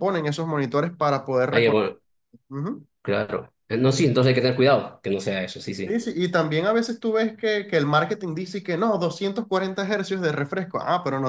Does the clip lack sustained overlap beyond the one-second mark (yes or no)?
yes